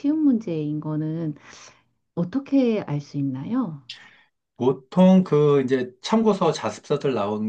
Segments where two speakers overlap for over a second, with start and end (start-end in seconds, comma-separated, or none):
none